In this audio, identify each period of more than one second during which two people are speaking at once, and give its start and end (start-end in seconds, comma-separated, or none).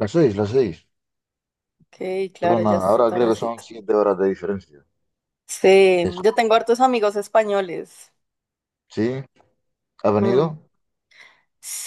2.4-3.6